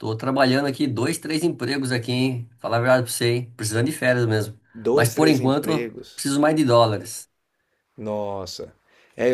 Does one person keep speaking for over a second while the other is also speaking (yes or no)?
yes